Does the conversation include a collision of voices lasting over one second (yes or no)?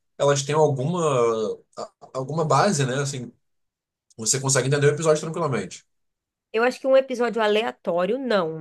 no